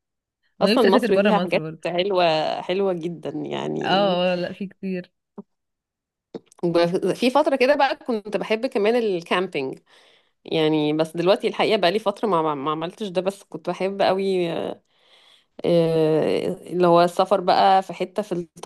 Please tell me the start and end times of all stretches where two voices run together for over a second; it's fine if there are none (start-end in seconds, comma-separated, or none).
0.6-1.9